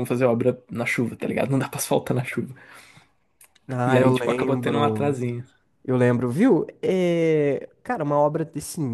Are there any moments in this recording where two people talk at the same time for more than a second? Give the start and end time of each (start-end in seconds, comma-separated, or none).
3.8-5.2